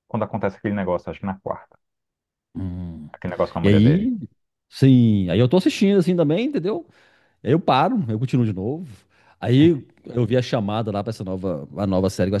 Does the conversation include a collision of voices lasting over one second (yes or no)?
no